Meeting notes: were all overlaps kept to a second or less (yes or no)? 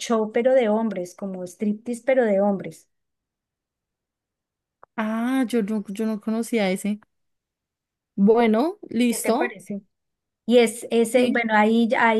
yes